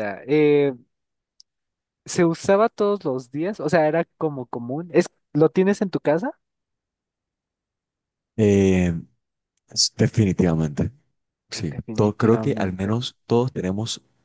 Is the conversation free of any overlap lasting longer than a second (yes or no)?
no